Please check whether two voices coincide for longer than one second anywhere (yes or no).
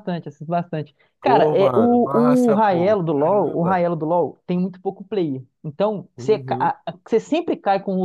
yes